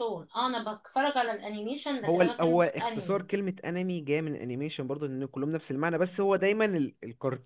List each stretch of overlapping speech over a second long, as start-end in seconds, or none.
2.0-3.3